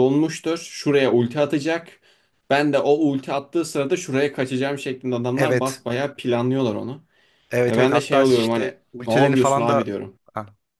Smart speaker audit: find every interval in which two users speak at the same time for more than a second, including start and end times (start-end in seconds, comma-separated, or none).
7.7-9.9